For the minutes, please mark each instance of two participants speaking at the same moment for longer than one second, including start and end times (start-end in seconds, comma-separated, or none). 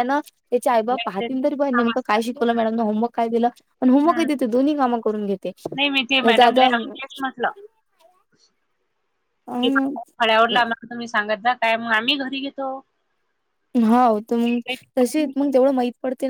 1.0-2.3